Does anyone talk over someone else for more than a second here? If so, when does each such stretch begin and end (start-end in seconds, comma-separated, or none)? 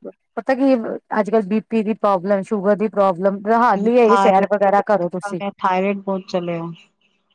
4.0-5.4